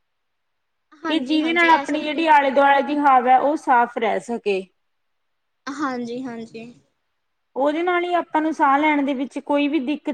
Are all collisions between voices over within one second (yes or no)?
no